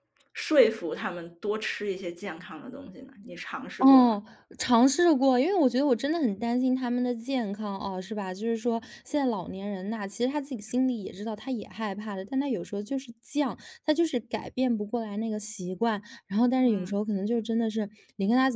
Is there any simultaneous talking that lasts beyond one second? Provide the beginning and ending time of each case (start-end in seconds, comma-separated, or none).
none